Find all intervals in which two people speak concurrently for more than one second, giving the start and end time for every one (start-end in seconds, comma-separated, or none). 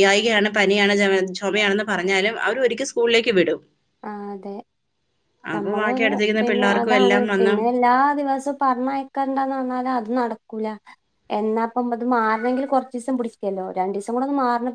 5.5-7.5